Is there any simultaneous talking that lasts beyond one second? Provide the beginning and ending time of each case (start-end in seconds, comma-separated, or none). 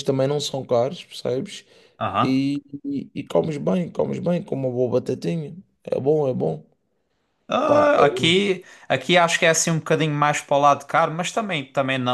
none